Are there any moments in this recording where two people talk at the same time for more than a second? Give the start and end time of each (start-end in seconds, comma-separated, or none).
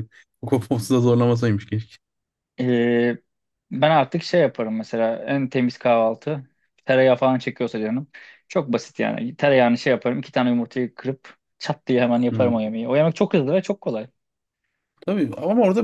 none